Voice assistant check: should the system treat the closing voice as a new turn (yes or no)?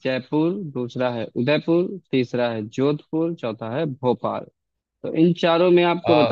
no